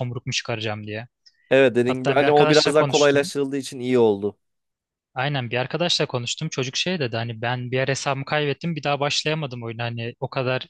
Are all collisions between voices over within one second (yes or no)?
no